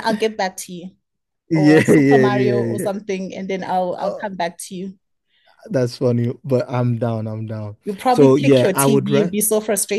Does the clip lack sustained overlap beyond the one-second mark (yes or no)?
no